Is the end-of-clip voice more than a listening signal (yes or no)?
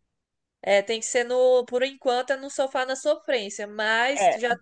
no